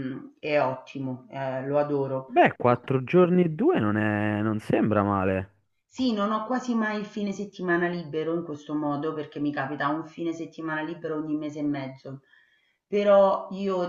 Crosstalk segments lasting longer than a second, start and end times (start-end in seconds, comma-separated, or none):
none